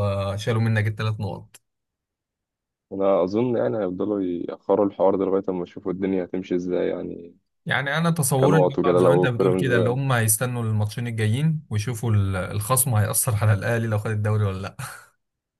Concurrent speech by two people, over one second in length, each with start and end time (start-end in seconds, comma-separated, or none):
8.4-9.9